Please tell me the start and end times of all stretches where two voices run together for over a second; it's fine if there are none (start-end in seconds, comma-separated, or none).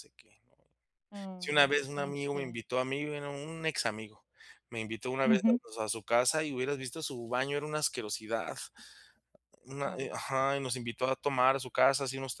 1.4-2.6